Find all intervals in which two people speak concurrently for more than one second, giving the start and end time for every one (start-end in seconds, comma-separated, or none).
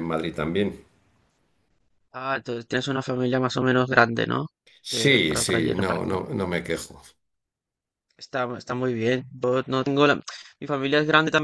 4.9-6.2